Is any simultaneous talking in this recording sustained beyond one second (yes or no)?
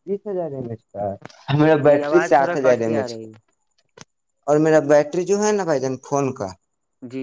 yes